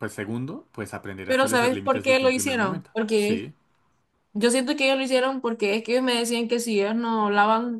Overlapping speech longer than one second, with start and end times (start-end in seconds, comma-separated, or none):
1.2-3.5